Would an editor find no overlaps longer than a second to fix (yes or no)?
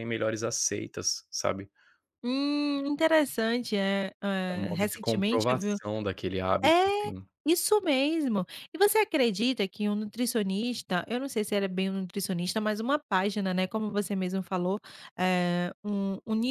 no